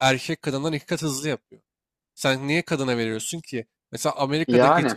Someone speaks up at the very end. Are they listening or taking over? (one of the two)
listening